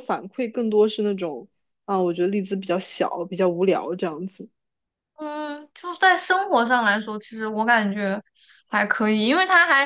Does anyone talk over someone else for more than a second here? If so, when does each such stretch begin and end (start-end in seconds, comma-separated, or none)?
none